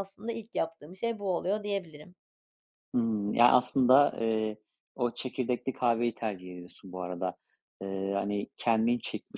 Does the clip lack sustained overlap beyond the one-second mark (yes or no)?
yes